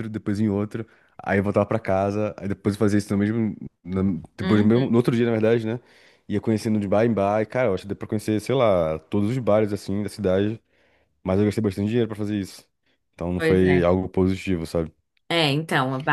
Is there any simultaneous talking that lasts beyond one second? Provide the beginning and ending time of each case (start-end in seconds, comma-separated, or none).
none